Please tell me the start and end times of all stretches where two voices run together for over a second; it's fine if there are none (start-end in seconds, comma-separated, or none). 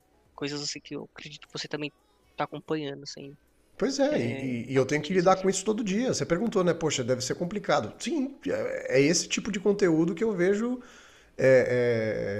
4.1-5.4